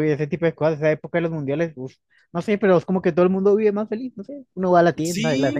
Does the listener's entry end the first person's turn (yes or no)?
no